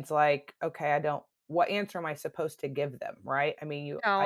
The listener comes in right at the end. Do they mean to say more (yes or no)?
yes